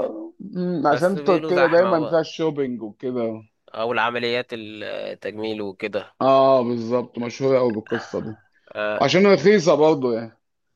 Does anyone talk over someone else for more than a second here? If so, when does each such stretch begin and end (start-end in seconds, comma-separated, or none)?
0.9-2.3